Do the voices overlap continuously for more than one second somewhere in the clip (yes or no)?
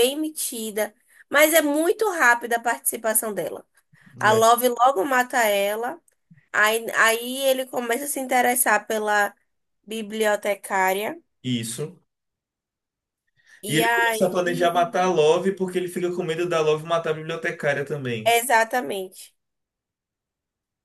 yes